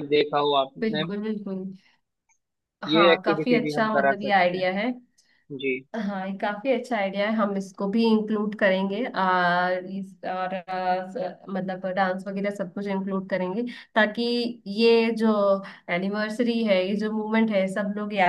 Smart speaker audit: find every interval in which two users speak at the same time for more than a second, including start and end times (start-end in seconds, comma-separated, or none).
2.9-4.8